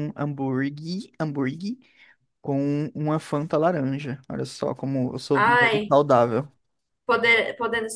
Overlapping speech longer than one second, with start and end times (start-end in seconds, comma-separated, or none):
none